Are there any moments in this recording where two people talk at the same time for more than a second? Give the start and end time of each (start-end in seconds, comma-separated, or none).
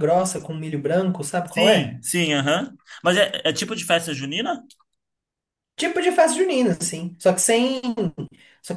none